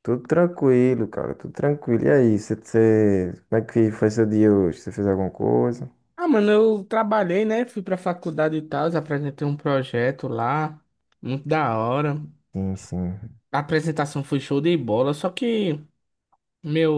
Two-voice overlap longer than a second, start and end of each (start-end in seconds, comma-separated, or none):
none